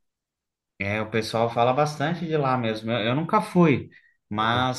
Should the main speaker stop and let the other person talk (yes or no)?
no